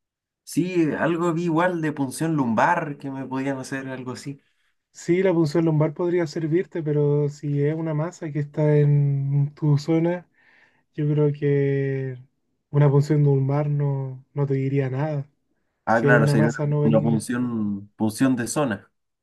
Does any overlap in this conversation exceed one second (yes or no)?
yes